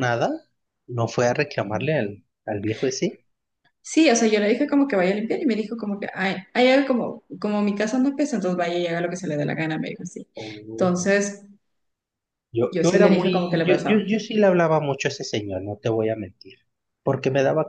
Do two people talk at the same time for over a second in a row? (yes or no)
yes